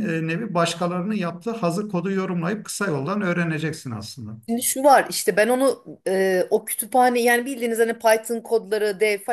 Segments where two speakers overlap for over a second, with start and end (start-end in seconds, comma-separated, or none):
none